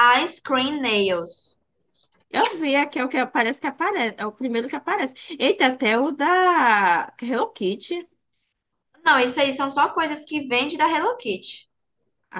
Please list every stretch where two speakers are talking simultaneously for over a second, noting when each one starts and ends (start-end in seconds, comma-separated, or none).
none